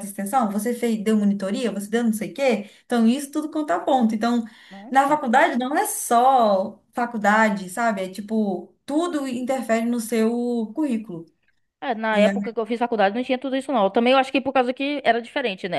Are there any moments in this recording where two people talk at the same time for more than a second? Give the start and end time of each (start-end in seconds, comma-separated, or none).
none